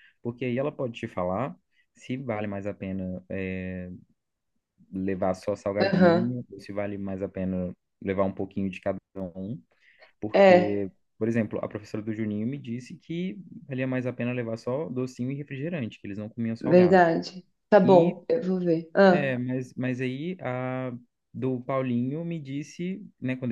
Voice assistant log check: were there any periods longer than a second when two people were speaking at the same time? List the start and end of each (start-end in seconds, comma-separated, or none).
none